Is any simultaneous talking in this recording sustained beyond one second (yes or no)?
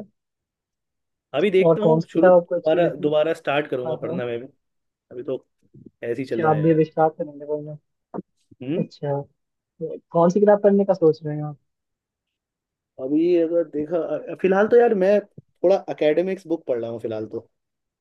yes